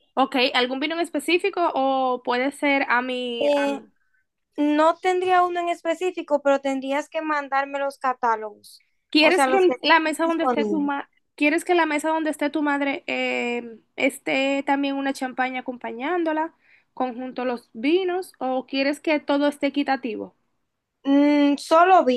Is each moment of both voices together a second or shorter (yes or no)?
no